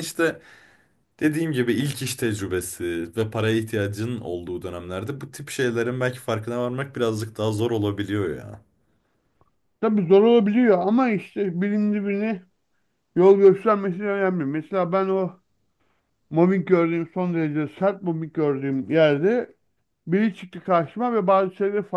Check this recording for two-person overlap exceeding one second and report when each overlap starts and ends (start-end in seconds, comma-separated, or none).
none